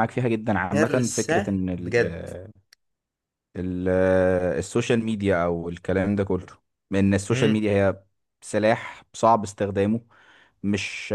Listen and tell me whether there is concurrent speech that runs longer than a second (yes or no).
yes